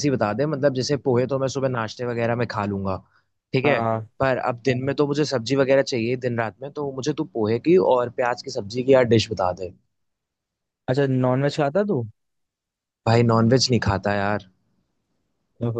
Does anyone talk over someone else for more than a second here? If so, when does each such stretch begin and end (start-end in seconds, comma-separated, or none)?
none